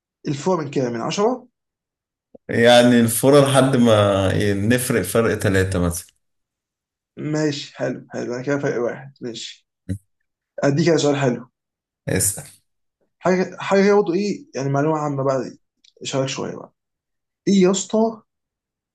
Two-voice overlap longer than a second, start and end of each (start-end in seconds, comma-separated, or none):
none